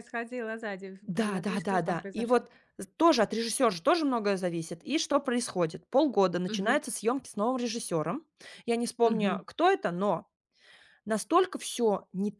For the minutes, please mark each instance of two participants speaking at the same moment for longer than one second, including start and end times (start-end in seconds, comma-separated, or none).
1.1-2.5